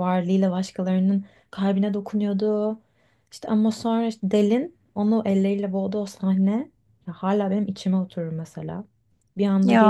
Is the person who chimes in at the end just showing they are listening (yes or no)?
yes